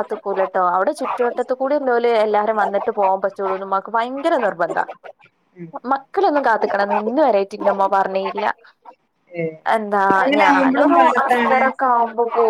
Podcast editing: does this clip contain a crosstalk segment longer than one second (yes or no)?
yes